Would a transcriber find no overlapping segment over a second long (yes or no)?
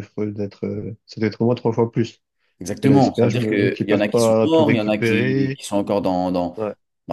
no